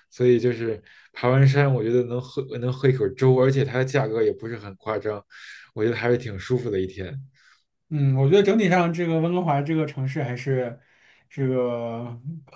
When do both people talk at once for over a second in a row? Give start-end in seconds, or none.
none